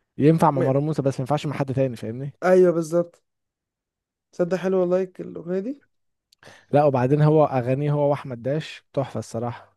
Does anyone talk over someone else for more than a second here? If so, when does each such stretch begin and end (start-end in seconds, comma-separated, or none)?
none